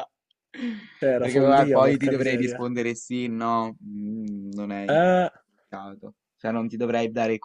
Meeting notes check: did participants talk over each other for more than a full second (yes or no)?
yes